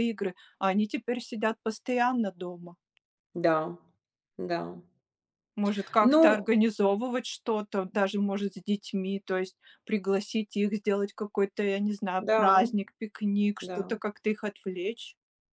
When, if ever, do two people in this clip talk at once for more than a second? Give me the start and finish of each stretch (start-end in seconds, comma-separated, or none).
none